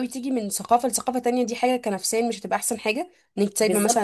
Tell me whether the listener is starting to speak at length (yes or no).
yes